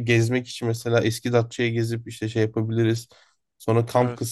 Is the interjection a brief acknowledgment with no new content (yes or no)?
yes